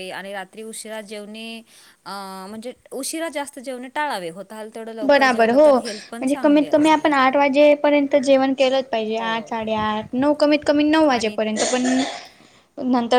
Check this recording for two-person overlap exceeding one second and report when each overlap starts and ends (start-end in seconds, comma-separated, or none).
5.1-7.1